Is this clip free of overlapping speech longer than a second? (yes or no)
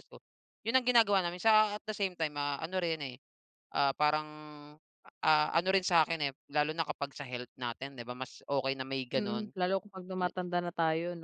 yes